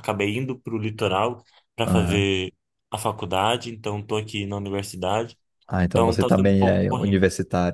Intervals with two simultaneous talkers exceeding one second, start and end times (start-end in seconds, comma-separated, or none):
5.9-7.2